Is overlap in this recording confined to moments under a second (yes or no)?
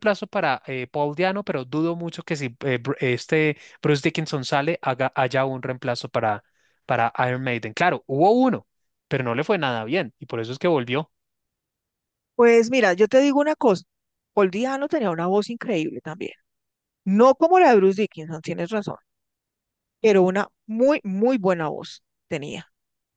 yes